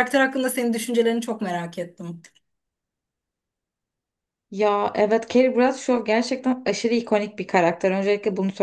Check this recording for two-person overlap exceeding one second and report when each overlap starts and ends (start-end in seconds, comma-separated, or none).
none